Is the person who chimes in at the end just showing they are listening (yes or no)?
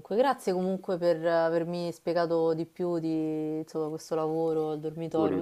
yes